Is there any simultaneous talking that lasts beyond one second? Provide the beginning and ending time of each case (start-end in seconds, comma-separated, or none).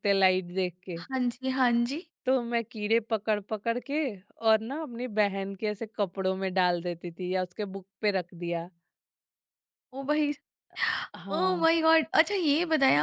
none